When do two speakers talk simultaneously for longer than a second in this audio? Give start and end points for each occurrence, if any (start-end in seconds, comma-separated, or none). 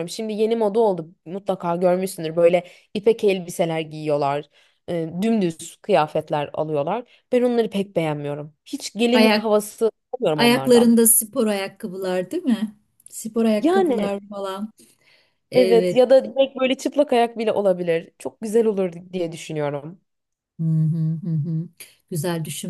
none